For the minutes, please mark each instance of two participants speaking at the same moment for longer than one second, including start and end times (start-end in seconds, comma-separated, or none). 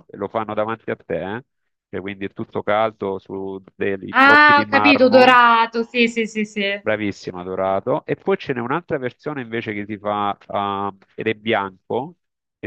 4.1-5.4